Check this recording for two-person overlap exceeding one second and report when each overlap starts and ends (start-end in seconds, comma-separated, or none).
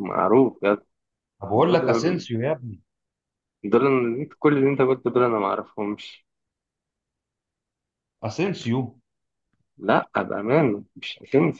none